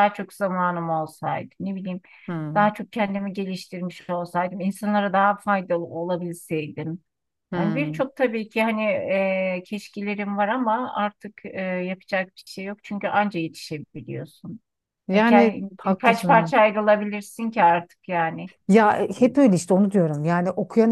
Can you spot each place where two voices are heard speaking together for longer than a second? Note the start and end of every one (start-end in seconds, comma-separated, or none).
15.1-16.5